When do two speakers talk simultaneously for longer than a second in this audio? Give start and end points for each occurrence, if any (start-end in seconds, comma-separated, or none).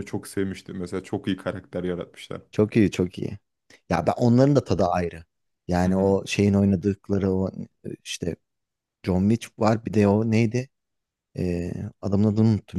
none